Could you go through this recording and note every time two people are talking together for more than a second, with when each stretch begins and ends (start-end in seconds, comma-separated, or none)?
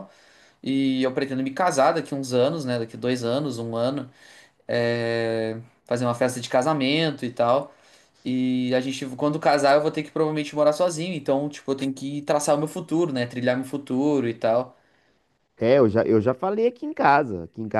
none